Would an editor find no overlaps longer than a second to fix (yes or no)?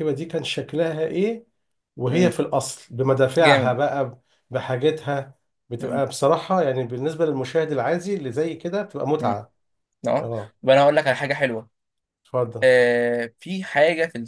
yes